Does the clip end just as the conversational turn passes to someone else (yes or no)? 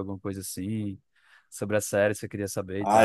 yes